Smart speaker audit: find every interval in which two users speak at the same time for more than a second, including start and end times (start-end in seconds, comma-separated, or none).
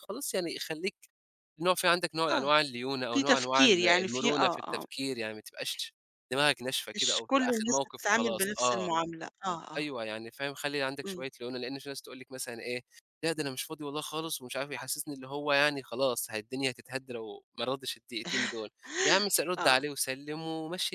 3.1-4.8, 7.0-8.9